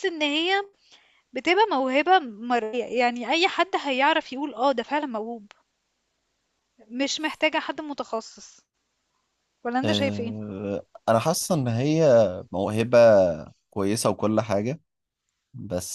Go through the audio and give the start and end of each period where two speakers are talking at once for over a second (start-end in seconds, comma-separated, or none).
none